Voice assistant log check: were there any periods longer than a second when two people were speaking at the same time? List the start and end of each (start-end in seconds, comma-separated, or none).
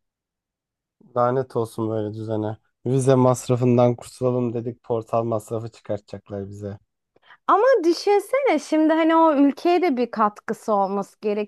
none